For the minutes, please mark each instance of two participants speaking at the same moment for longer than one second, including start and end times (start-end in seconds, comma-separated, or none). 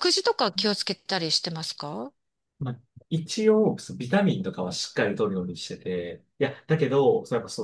none